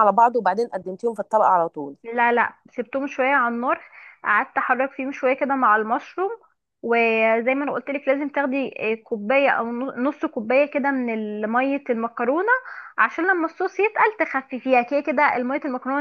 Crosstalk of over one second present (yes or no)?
no